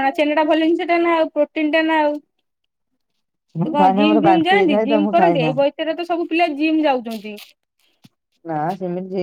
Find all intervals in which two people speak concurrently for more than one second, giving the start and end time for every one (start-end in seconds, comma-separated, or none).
3.6-5.5